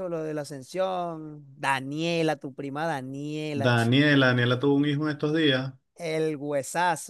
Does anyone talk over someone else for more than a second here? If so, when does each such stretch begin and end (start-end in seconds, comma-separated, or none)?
none